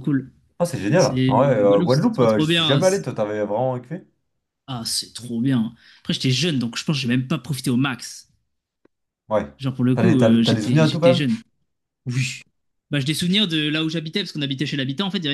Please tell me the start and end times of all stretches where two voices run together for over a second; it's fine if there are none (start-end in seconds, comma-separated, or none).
1.0-3.1, 9.9-11.3